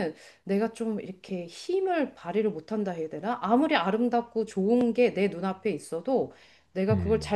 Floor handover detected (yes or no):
no